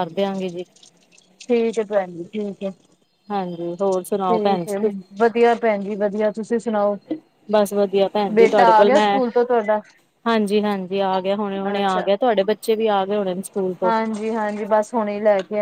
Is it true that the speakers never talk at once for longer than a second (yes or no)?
yes